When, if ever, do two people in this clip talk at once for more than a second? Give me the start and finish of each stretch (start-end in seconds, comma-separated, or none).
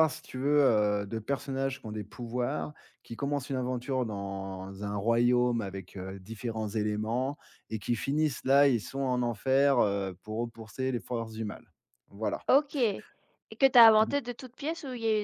none